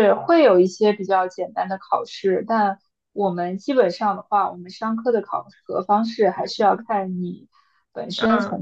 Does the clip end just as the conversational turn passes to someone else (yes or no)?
no